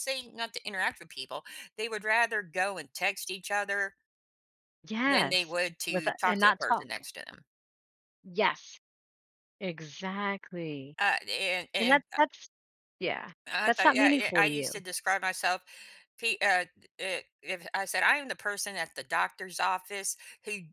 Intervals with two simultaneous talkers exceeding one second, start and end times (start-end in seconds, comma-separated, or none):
5.0-7.0, 13.5-14.8